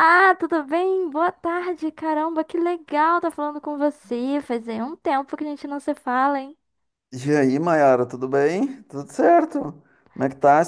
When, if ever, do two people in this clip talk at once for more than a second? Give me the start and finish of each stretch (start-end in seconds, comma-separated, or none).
none